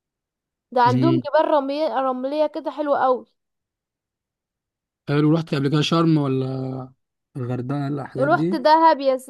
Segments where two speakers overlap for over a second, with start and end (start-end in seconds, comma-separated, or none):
none